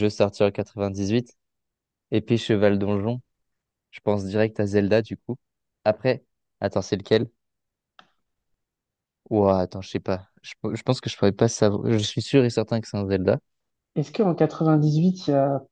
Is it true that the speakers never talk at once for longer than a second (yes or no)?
yes